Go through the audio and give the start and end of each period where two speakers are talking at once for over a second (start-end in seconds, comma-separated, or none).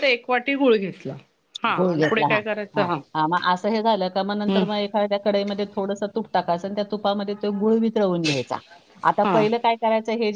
none